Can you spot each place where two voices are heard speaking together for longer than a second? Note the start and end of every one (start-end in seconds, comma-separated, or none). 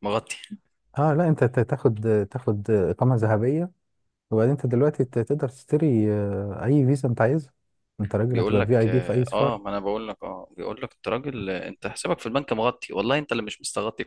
8.3-9.6